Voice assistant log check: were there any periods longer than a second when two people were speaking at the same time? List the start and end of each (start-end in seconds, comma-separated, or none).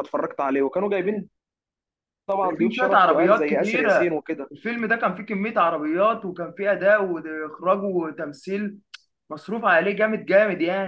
2.4-4.2